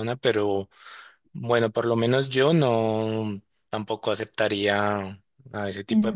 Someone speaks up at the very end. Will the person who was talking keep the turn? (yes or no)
yes